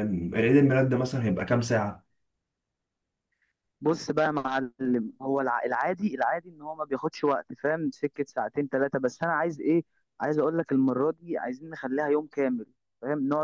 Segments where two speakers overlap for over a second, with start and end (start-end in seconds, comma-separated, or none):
none